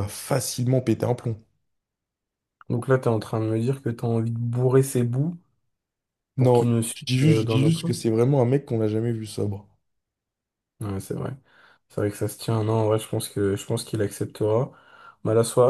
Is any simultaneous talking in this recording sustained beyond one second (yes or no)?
yes